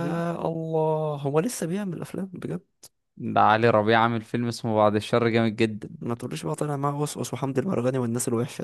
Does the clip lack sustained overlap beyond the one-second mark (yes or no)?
yes